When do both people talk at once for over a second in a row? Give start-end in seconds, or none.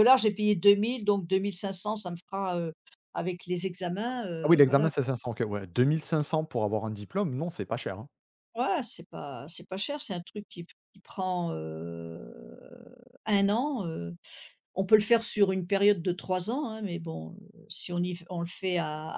none